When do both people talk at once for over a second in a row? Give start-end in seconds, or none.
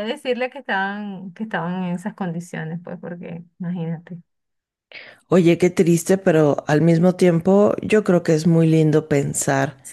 none